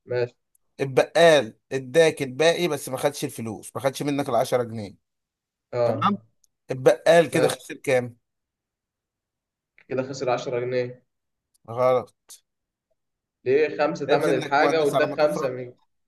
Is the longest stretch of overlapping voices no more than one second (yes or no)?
no